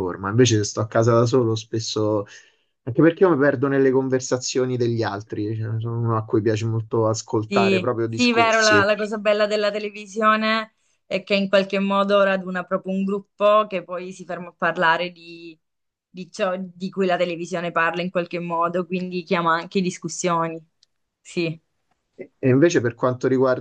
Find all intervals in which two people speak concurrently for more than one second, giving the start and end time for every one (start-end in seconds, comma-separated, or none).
7.5-8.9